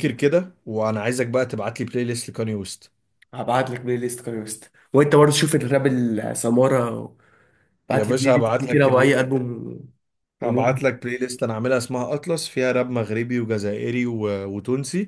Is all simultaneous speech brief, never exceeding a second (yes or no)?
no